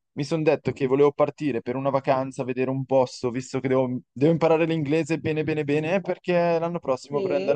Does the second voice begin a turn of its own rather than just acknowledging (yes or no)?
no